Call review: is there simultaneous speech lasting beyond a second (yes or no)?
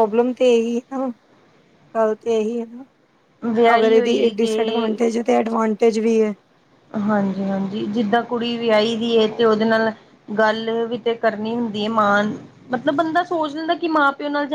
yes